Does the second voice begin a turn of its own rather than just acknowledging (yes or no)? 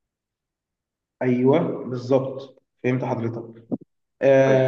no